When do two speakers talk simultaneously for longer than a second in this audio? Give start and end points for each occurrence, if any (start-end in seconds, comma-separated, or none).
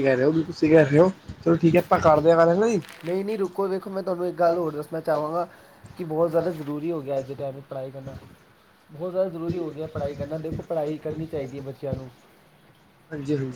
none